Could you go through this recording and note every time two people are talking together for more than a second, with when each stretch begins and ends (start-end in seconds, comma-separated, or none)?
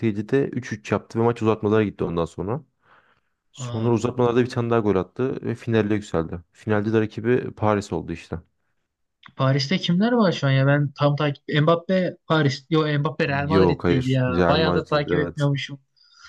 13.5-15.5